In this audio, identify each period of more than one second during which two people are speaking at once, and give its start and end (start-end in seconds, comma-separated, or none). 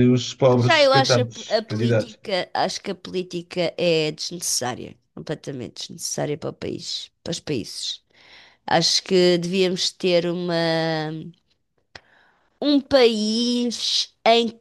0.6-2.2